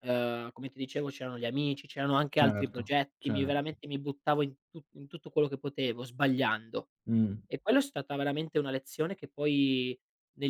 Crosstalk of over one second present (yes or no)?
yes